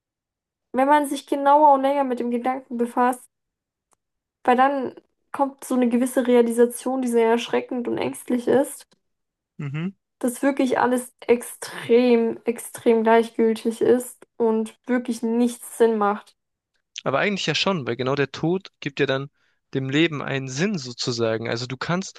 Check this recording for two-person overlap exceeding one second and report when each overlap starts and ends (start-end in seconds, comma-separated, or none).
none